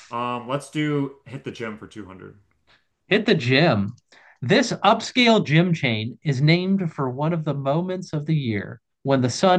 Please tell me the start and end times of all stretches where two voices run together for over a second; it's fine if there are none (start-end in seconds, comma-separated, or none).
none